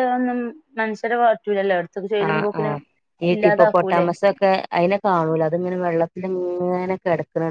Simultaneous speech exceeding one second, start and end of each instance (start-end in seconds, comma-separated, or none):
none